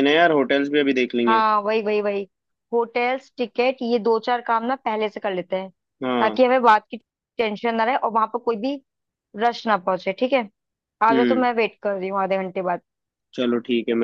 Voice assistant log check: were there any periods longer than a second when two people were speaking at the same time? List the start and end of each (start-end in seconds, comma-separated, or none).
none